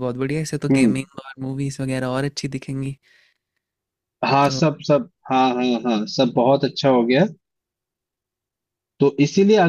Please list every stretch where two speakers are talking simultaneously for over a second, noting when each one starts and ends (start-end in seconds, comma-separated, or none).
none